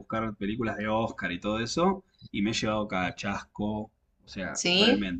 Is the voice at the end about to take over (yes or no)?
no